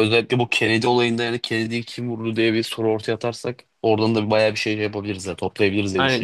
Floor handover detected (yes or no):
yes